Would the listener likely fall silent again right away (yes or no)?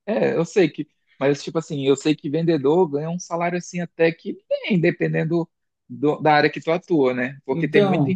yes